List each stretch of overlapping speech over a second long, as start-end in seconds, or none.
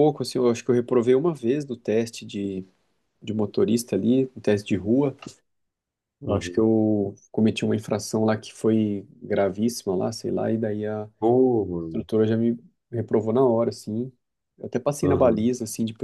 none